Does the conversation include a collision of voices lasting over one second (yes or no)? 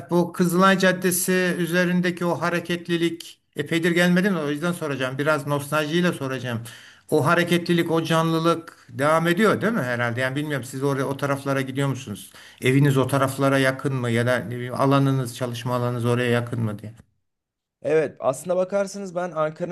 no